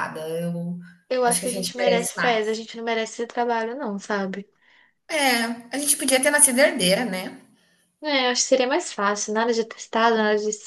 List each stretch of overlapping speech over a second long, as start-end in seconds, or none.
1.2-2.5